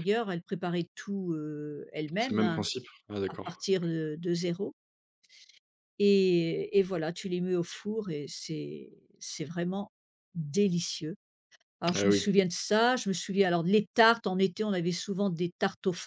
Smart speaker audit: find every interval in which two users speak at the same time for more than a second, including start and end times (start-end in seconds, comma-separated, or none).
none